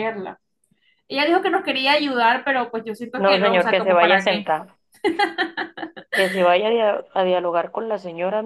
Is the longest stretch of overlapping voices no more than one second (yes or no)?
no